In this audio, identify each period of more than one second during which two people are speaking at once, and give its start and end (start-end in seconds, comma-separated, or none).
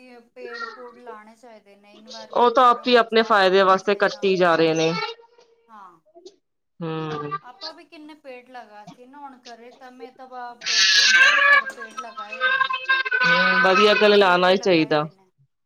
2.4-4.3